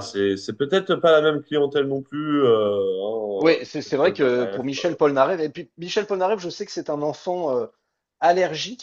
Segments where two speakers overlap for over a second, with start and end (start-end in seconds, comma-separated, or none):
3.4-5.0